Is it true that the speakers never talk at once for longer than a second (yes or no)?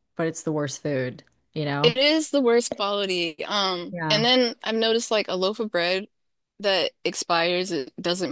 yes